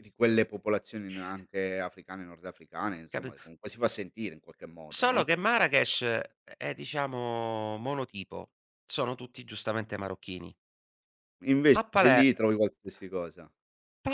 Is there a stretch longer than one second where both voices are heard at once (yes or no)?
no